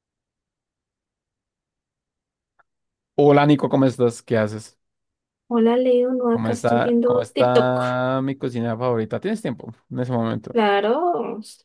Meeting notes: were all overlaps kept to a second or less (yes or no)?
no